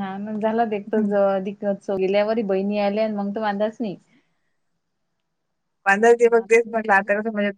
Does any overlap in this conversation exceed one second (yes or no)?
no